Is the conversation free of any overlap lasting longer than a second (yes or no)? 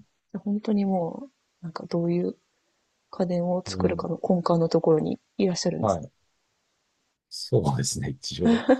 yes